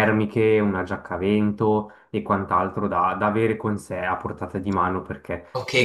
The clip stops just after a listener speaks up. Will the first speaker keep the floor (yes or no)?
no